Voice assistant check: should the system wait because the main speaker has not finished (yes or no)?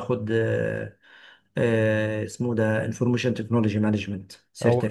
no